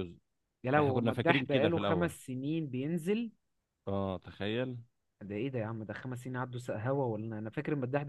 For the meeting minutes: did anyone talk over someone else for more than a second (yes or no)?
yes